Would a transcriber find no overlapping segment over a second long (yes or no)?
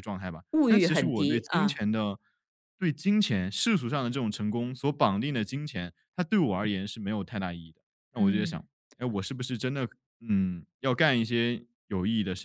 no